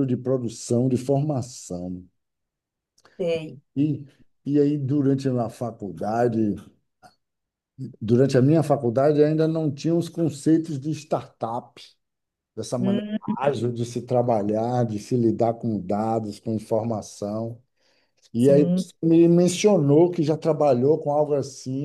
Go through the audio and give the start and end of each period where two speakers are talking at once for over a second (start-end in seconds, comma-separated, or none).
none